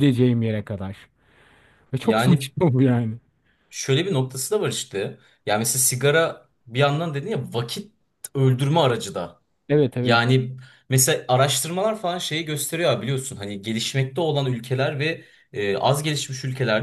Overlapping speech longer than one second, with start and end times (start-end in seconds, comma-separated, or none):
none